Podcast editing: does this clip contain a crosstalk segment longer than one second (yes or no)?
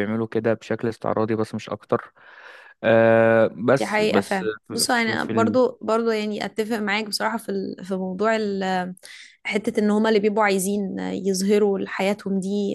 yes